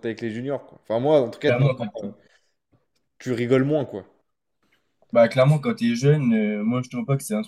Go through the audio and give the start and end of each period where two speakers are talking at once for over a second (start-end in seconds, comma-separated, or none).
none